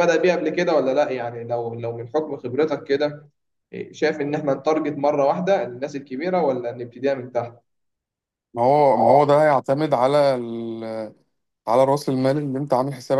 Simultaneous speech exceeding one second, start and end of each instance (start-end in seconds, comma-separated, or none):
none